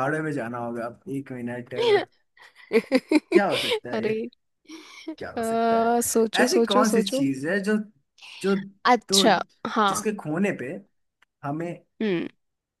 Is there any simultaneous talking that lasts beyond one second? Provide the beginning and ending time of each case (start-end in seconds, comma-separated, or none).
5.4-7.2